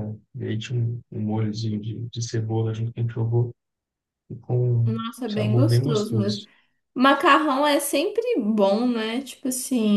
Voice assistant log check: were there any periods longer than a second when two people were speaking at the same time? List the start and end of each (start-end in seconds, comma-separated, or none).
4.8-6.5